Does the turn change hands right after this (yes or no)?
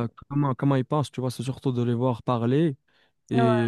no